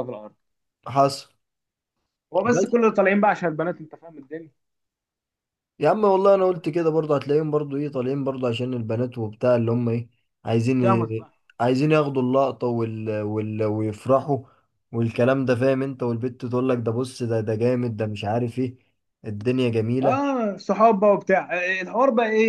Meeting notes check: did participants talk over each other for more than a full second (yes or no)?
no